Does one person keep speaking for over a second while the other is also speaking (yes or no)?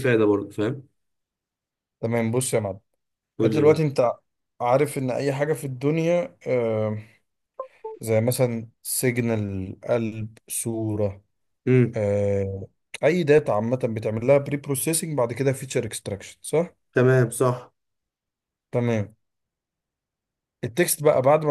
no